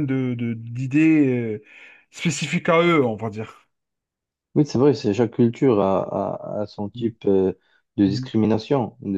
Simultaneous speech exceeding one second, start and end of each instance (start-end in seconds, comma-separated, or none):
none